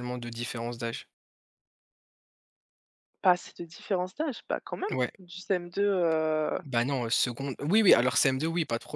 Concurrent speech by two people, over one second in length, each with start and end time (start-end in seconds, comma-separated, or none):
none